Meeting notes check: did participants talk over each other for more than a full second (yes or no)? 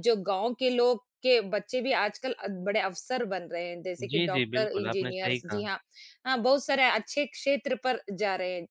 yes